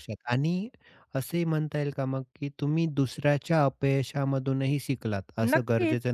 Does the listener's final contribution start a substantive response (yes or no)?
no